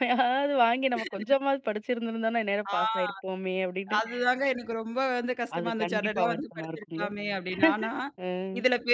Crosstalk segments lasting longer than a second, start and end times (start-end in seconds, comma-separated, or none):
5.6-7.0